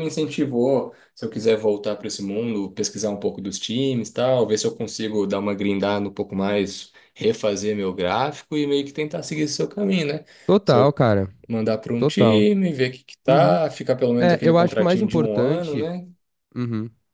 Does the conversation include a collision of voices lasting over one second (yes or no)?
yes